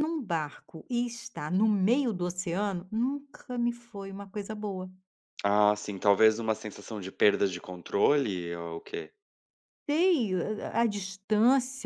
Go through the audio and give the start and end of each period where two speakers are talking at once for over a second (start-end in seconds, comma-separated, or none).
none